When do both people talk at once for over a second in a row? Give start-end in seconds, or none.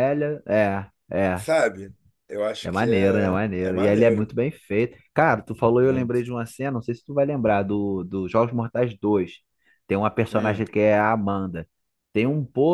2.6-4.3